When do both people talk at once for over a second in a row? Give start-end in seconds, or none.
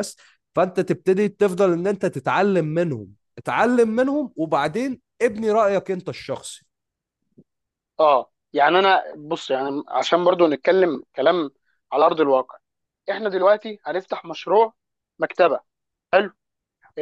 none